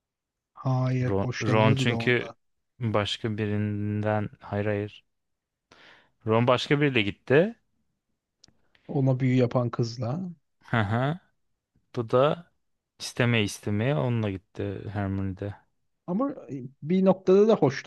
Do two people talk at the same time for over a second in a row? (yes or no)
yes